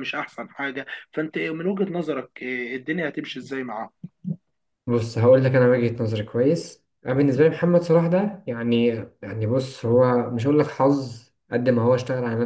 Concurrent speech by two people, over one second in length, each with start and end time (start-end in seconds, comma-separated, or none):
none